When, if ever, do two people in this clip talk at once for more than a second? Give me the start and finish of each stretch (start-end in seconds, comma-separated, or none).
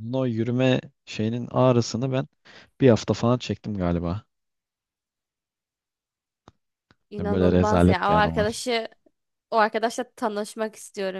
7.2-8.6